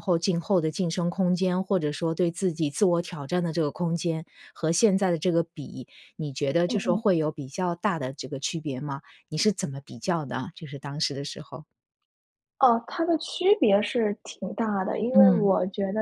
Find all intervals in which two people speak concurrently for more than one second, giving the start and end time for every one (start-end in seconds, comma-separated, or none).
none